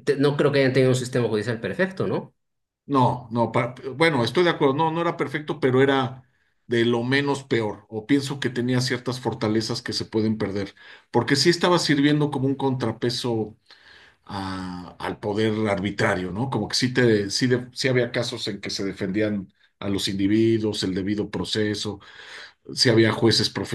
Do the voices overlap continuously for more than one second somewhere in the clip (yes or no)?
no